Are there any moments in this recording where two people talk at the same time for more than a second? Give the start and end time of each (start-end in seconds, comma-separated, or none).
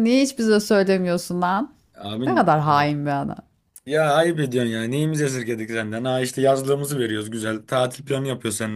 none